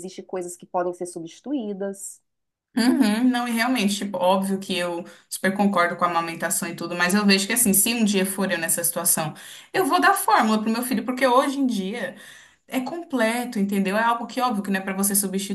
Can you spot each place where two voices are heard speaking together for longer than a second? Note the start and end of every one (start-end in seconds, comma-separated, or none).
none